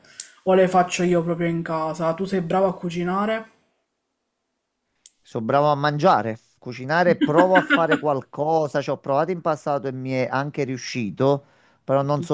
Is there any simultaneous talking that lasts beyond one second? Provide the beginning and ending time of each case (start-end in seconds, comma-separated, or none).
none